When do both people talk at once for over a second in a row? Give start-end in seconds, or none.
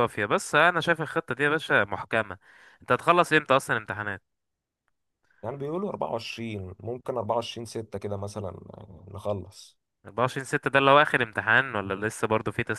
none